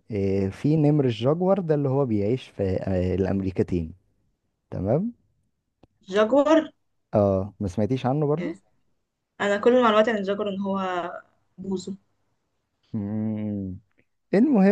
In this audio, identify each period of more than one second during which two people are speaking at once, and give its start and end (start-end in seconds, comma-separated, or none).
none